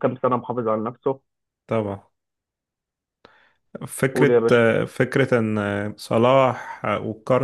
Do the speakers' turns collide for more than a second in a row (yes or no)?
no